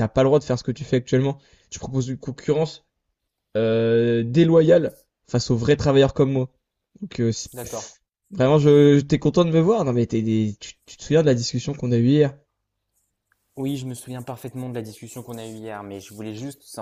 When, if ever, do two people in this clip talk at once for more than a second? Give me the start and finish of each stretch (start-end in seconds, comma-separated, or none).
none